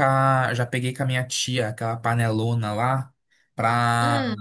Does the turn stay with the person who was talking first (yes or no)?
yes